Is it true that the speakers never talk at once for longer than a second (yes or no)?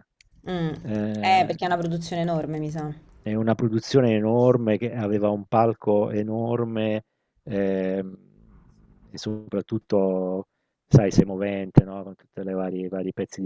yes